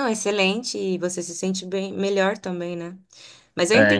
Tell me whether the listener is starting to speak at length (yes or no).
yes